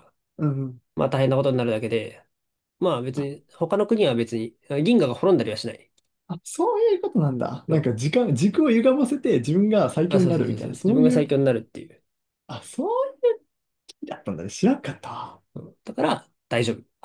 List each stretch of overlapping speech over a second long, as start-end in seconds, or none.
10.1-11.3